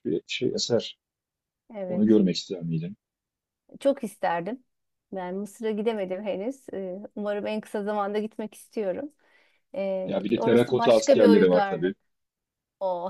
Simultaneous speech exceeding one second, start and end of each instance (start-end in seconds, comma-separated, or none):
10.0-11.9